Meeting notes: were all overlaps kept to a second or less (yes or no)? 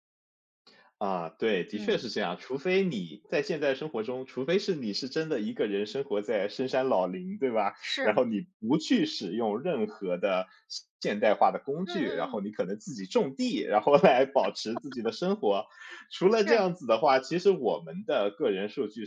yes